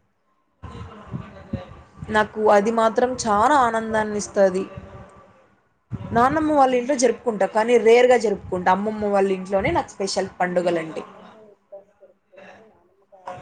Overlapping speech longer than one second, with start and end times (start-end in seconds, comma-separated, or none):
2.6-4.4